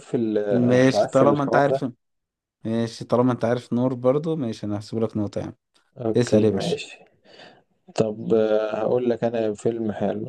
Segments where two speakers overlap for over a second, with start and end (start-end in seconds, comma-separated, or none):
0.5-1.8